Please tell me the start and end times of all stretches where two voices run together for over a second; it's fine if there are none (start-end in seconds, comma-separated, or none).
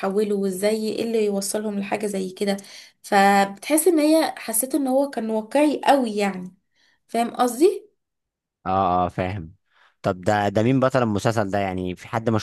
none